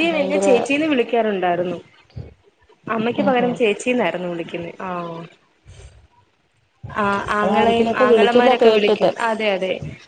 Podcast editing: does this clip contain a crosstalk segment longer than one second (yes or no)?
yes